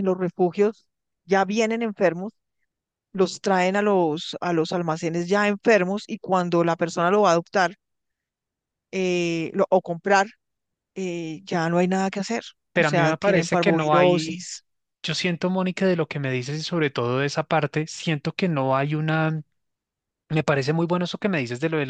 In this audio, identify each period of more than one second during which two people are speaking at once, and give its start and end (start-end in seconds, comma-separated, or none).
12.7-14.4